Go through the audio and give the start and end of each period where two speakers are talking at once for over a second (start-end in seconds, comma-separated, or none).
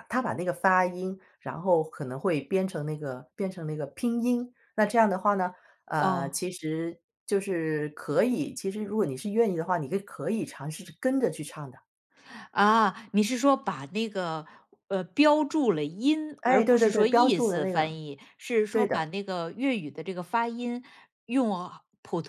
16.4-18.0